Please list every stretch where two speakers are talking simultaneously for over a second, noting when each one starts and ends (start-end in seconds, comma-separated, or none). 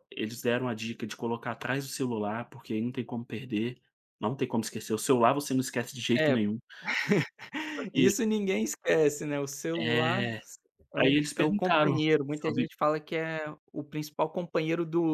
10.9-12.7